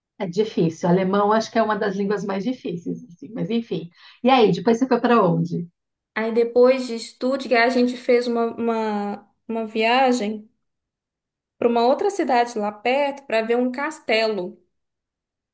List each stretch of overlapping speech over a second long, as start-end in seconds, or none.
none